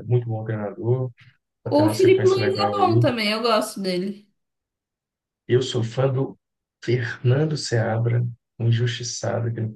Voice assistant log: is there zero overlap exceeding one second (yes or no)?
no